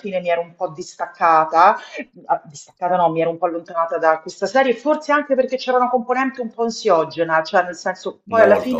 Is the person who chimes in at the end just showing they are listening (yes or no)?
yes